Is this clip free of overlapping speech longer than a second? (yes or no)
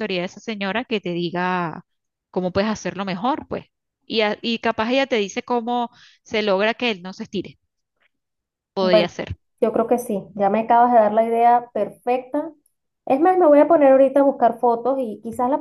yes